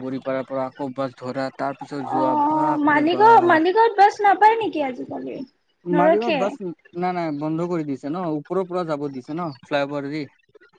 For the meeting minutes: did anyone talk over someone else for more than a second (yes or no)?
yes